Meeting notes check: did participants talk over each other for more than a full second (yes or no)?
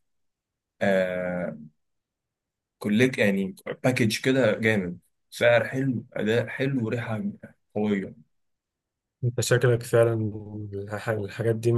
no